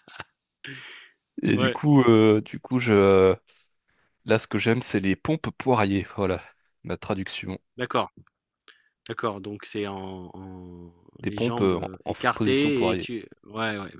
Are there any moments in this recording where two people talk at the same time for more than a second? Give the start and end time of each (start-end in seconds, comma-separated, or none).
11.2-13.1